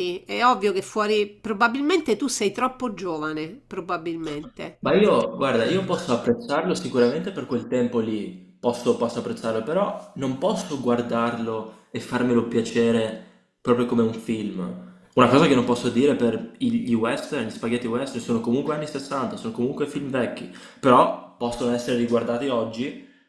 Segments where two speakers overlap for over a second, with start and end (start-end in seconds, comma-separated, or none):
none